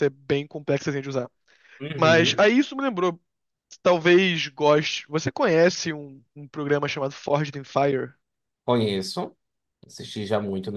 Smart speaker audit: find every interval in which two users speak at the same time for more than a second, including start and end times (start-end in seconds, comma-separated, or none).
none